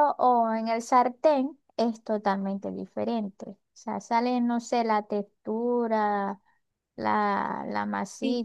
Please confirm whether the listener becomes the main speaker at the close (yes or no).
yes